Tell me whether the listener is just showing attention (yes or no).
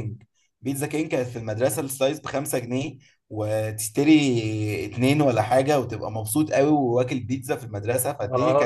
no